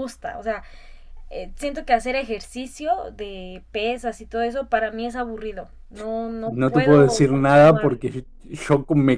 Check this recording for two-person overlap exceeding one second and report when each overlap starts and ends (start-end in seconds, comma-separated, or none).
6.4-8.0